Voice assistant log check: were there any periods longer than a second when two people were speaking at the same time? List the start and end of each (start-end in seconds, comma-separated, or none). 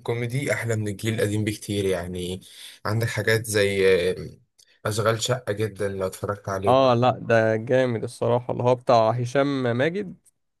none